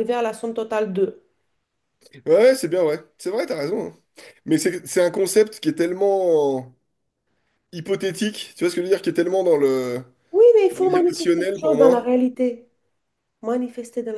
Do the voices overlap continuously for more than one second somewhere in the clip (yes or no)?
yes